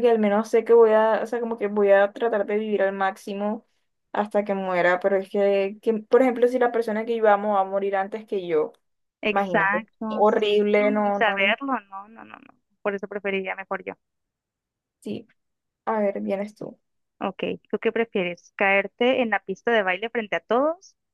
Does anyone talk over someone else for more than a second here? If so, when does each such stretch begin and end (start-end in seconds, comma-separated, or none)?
9.3-11.6